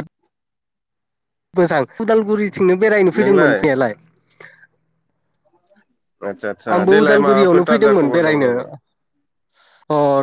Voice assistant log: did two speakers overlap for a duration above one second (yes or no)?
yes